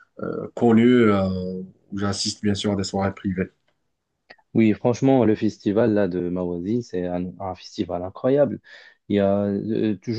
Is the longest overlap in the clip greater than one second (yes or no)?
no